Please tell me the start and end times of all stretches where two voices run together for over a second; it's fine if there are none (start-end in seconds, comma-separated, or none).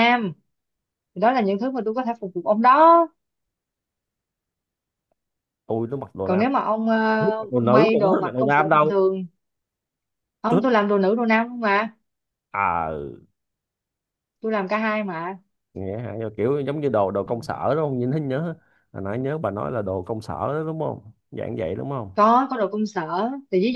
7.2-9.0